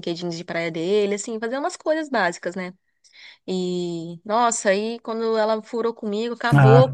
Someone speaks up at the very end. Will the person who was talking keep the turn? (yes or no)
yes